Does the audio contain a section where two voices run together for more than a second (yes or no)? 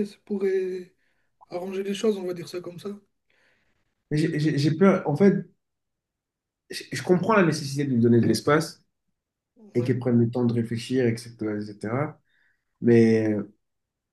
no